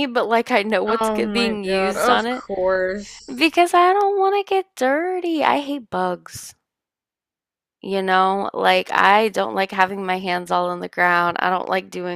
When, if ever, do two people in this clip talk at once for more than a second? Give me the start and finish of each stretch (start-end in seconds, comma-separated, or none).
1.0-2.4